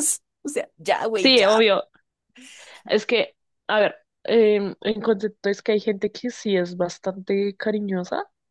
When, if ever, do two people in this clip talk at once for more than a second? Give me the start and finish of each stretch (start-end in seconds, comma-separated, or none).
none